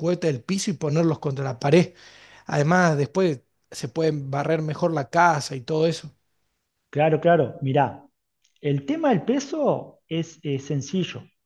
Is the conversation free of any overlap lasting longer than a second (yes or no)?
yes